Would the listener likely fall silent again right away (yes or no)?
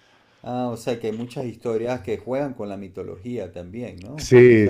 no